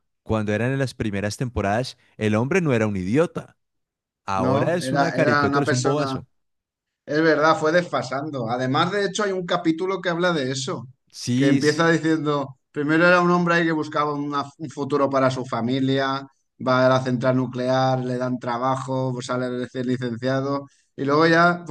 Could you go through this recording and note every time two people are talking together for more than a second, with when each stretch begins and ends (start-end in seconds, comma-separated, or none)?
4.3-6.2